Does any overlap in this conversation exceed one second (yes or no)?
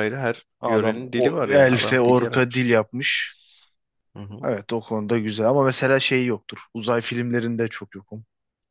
yes